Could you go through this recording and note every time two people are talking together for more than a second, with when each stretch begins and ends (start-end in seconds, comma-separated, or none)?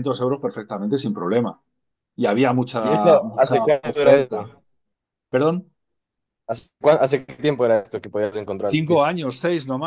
2.8-4.5